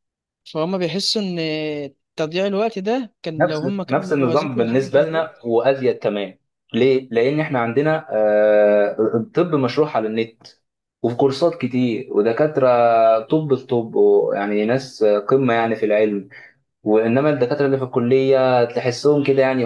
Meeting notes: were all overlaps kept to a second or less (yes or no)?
no